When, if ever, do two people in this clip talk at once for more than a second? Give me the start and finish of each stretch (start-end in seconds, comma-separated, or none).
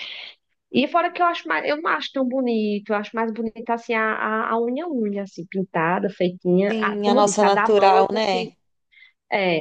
6.7-8.5